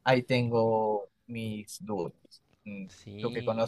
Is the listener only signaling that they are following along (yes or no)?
no